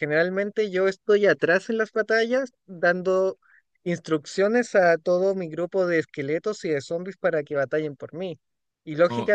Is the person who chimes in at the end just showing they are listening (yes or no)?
yes